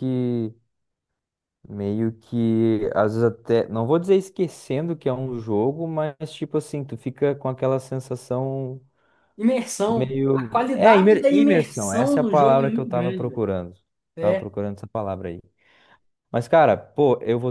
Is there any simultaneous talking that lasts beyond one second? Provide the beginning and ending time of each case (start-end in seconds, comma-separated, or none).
9.9-13.4